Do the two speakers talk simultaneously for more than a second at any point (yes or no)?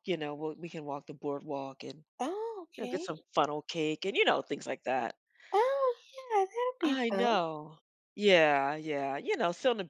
no